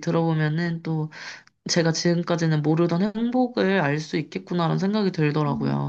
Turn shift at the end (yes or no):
yes